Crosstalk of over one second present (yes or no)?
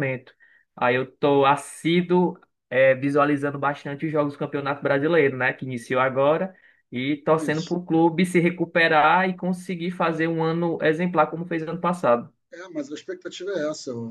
no